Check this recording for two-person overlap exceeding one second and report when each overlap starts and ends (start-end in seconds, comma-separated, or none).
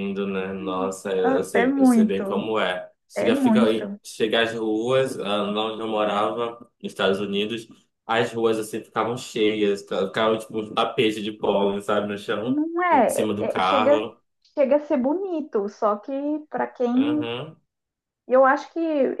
1.2-2.5, 12.4-14.1